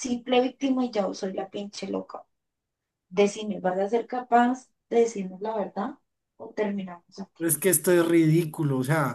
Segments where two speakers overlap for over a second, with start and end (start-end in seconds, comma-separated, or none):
none